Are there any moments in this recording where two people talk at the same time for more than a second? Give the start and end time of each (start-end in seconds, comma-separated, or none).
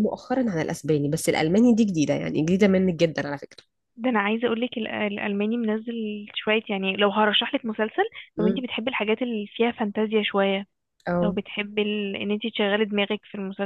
none